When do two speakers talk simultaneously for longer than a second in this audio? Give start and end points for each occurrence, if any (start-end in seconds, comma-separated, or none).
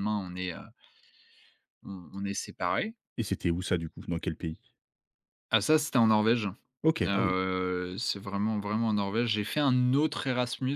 none